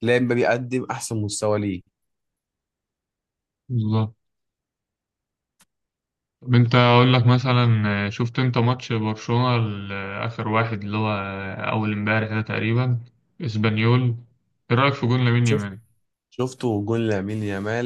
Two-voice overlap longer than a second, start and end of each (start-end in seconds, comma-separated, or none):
none